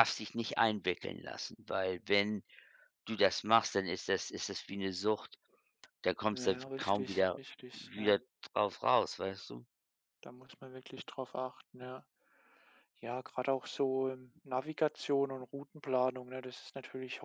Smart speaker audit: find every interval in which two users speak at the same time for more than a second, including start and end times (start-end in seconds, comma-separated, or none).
6.3-8.1